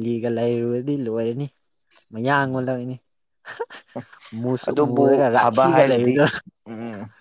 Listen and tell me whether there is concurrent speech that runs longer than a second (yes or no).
yes